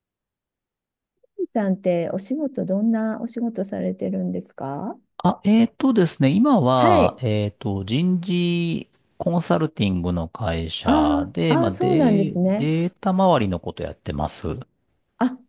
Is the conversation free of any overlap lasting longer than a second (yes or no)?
no